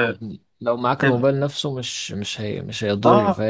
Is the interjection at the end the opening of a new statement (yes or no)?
yes